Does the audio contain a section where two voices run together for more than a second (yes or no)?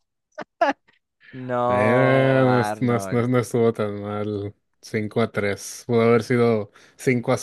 yes